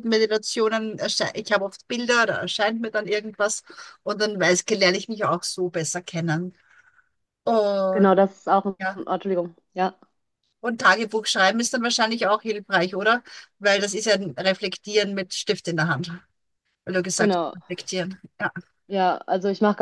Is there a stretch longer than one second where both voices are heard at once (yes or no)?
no